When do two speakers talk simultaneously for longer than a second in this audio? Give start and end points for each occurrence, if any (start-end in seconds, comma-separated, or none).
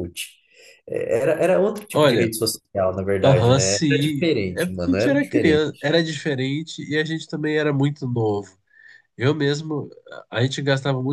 3.2-5.7